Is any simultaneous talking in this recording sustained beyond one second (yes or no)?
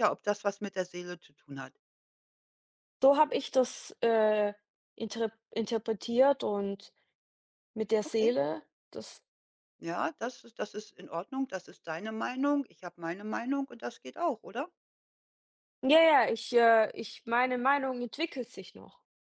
no